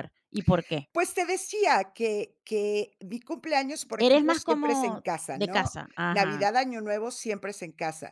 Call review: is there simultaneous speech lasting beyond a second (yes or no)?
yes